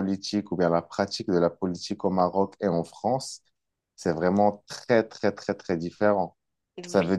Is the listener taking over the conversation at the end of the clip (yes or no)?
no